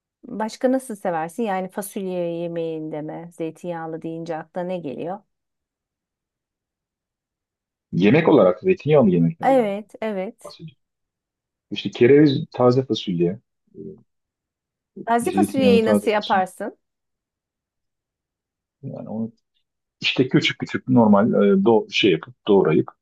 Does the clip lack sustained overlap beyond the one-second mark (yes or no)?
no